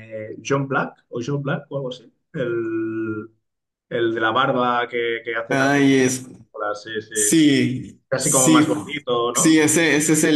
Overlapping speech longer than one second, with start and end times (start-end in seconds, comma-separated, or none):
8.1-9.6